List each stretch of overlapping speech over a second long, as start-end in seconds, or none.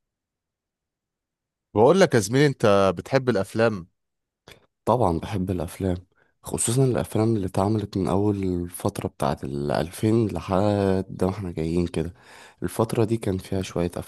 none